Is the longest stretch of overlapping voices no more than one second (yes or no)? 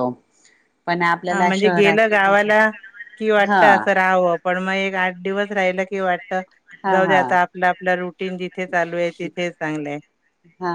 no